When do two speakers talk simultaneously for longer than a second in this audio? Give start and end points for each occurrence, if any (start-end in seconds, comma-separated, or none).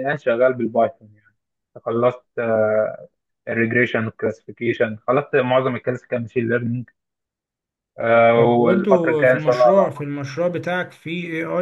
8.5-10.1